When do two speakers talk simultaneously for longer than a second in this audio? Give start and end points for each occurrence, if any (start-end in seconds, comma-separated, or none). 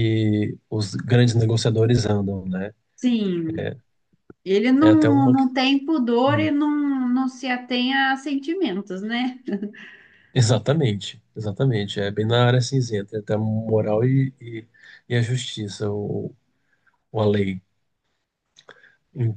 none